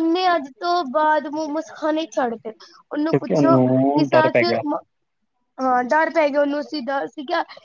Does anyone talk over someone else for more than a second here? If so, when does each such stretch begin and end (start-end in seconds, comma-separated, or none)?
3.1-4.4